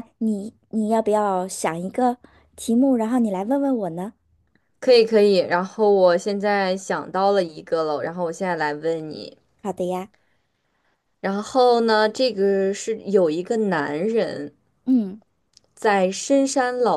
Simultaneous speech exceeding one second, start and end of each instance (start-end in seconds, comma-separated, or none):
none